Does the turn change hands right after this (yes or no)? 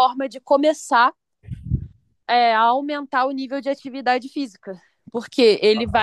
no